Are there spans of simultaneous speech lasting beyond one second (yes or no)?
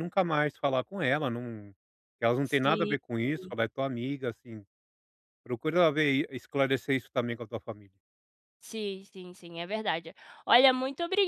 no